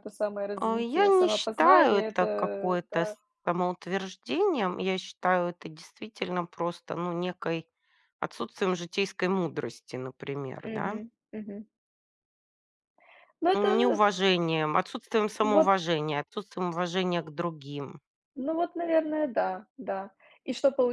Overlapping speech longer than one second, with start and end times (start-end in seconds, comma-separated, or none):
0.6-3.2